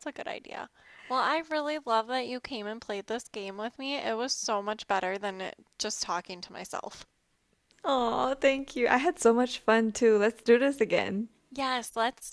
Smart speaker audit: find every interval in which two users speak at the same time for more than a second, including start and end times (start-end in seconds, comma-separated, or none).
none